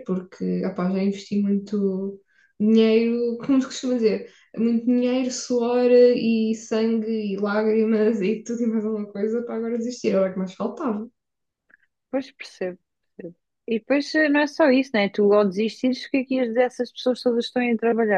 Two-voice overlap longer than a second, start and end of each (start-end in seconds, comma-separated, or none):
none